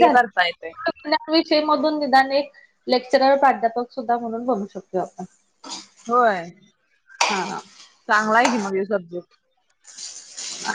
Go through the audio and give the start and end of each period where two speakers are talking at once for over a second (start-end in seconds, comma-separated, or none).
none